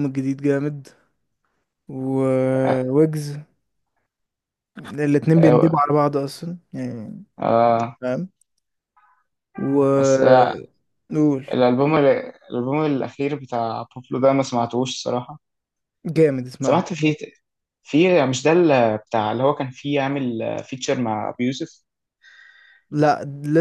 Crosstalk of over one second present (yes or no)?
no